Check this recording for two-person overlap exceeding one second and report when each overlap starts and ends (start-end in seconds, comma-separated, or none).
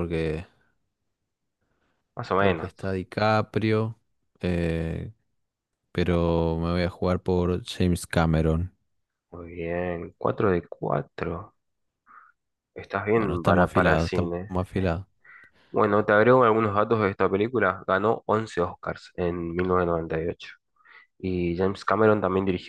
13.1-14.5